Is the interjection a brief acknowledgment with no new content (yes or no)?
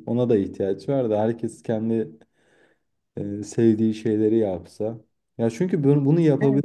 yes